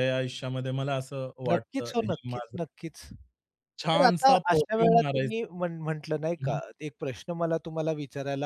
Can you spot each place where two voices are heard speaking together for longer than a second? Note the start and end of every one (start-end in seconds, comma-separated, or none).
3.9-5.5